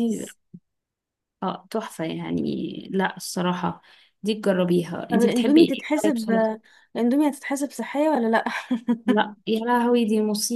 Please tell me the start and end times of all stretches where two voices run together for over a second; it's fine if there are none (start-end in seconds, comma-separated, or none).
5.1-6.3